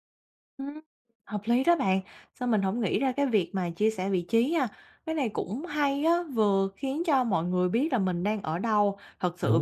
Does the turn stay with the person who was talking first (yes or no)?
yes